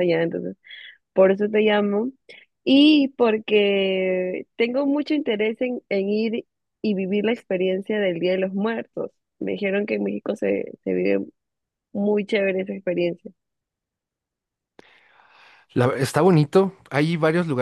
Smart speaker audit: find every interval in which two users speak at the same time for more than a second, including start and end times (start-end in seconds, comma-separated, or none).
none